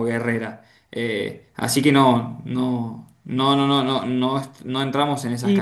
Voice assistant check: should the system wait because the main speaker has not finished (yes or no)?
no